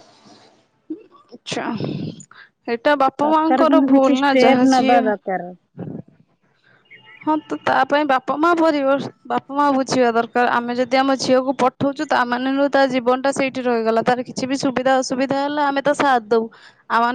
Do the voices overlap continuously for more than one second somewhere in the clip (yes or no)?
yes